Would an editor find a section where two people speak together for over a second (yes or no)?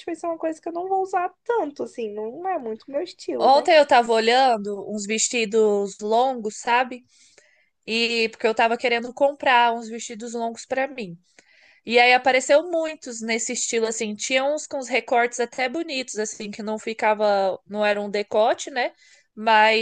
no